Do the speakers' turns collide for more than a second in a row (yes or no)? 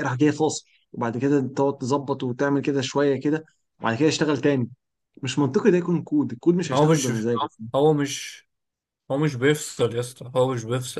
no